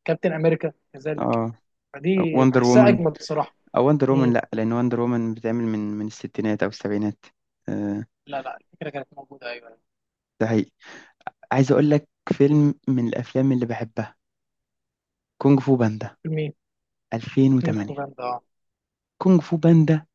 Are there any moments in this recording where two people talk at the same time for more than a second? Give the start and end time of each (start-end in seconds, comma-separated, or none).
none